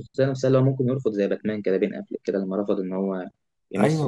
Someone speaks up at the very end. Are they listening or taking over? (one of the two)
taking over